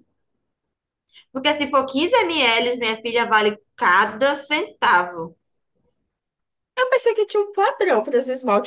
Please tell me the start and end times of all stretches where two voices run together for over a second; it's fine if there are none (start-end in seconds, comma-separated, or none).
none